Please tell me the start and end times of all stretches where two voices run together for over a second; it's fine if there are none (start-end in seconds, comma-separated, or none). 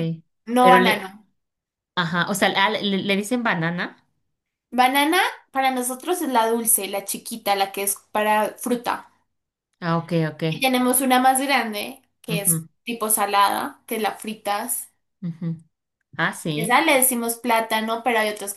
none